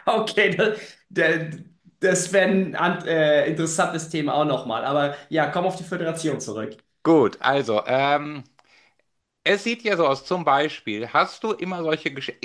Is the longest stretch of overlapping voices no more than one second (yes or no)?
yes